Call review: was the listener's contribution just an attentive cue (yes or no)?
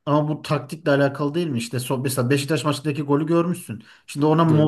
yes